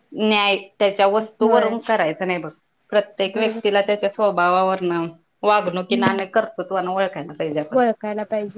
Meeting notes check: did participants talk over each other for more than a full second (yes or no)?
no